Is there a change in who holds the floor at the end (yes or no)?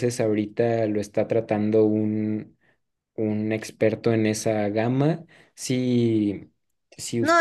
yes